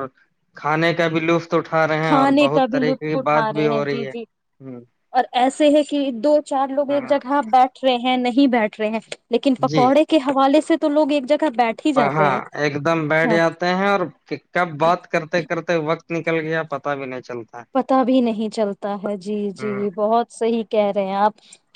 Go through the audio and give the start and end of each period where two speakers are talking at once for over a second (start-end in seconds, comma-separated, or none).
2.1-4.1